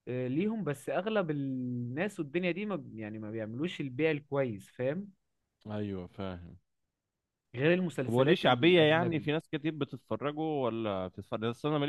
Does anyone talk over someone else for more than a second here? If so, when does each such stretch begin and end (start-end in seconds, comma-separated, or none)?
8.0-9.3